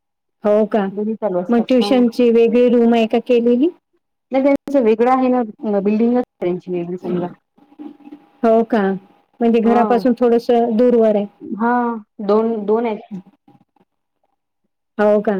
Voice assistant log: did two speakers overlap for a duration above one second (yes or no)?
no